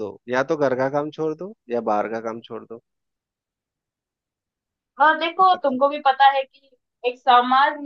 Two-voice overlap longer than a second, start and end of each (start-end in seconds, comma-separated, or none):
none